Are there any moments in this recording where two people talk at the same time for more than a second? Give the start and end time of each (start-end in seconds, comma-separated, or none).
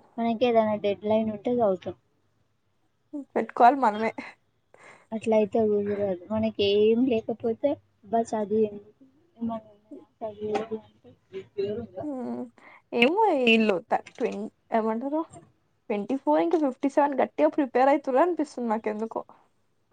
none